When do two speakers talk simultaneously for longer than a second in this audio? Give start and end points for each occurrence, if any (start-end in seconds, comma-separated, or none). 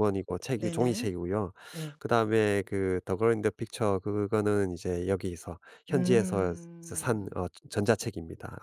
5.9-7.4